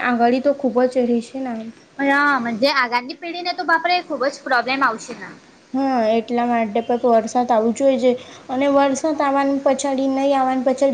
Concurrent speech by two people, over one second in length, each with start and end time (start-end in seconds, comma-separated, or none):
none